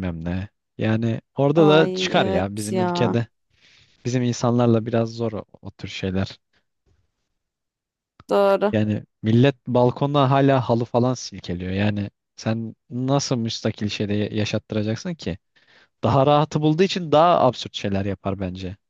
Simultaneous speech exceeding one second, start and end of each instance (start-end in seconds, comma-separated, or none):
1.6-3.2